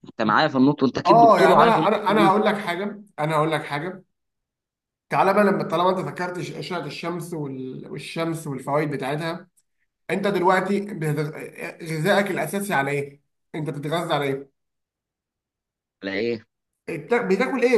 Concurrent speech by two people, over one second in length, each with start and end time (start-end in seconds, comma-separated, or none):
1.1-2.3